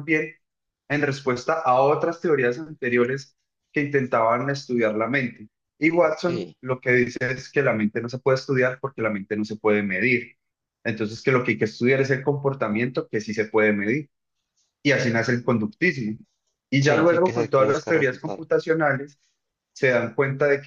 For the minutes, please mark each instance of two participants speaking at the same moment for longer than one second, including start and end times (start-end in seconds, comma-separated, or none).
16.8-18.5